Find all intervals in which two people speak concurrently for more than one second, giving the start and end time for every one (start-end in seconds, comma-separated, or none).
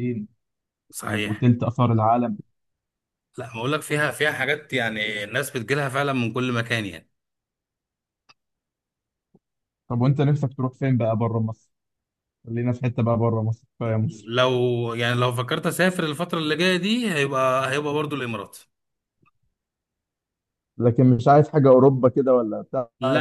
none